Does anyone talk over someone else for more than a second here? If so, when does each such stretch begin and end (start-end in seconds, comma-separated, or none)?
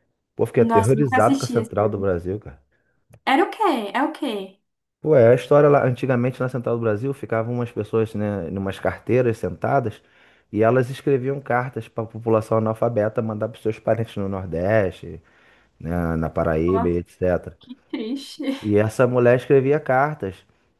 0.6-2.0